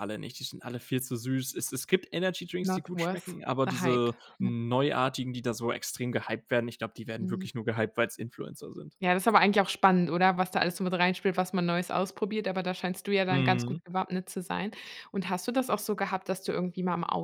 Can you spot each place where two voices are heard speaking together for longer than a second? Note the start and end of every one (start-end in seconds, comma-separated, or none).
2.6-4.5